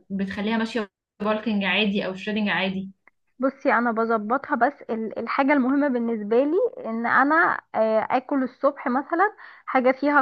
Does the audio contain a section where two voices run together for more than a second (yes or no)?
no